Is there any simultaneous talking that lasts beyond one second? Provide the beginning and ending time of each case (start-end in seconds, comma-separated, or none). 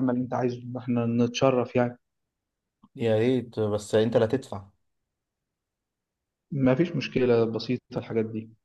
none